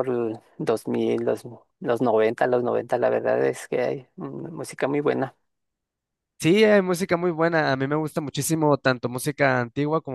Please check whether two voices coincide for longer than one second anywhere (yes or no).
no